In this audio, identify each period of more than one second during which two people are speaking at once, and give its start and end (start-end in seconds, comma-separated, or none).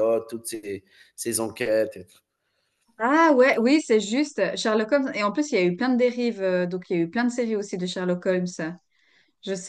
none